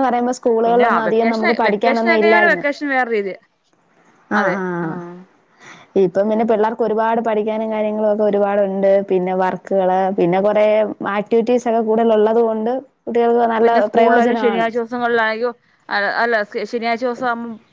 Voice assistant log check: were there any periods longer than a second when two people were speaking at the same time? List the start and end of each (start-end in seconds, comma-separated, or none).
0.7-2.6